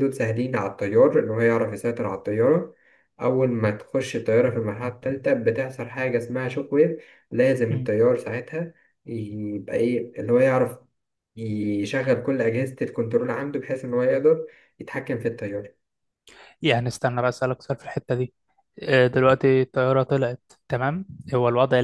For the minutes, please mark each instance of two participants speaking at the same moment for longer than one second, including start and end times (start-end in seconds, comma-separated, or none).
none